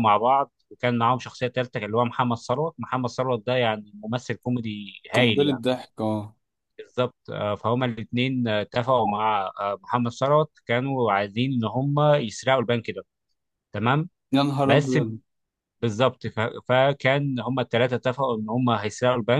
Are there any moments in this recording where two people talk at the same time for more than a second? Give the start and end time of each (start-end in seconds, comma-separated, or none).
none